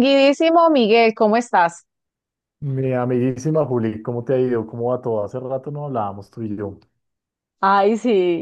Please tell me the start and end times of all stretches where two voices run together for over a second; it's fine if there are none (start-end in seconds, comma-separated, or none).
none